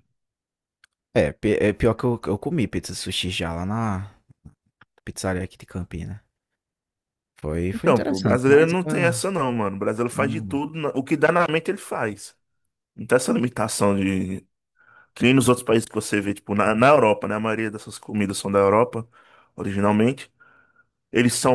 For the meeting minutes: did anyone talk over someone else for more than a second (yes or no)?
yes